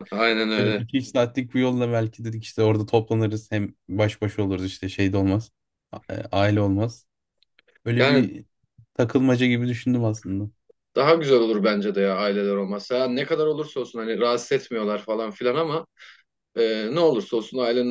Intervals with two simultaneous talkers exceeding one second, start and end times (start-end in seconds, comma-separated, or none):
none